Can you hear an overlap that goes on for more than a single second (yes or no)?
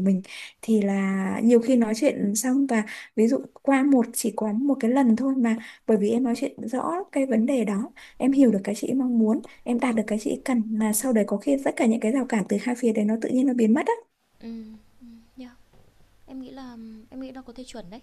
no